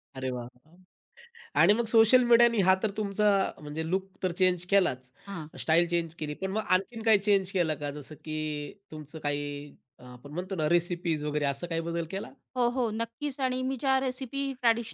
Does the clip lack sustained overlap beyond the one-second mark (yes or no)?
yes